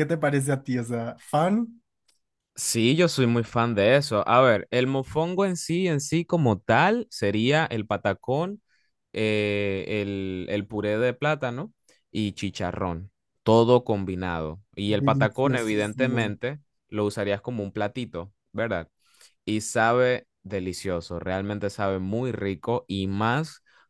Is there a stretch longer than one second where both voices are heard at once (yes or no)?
yes